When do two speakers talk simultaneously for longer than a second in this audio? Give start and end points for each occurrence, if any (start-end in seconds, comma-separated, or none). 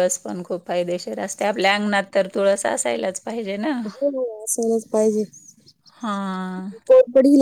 none